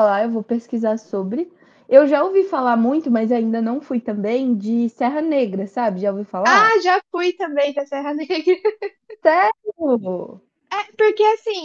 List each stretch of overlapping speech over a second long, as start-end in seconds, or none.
none